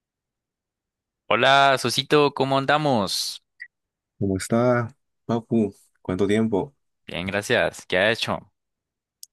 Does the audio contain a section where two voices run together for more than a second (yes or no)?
no